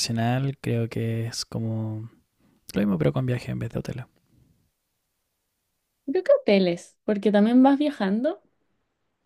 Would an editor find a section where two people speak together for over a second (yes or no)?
no